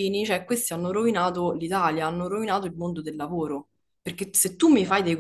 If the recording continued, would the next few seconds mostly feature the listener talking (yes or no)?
no